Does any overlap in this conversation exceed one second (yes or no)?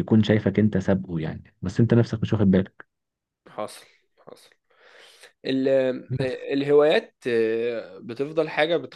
no